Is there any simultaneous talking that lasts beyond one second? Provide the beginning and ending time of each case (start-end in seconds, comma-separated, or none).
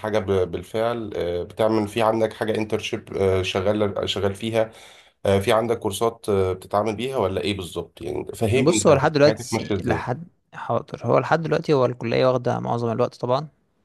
8.5-10.1